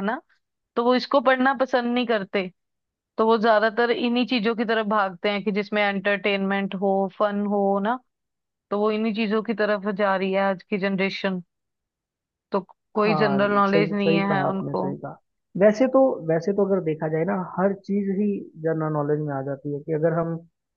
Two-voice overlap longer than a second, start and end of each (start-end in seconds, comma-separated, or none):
13.0-14.8